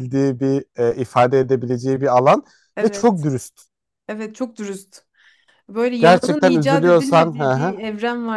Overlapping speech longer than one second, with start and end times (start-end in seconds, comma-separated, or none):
6.0-7.8